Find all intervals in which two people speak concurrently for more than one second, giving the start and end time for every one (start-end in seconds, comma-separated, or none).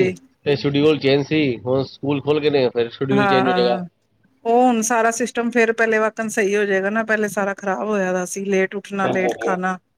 none